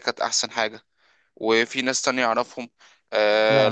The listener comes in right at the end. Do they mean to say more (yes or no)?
no